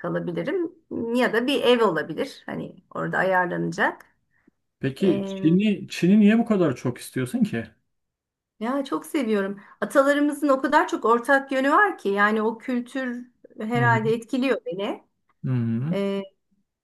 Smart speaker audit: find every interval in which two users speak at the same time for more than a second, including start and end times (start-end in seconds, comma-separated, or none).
none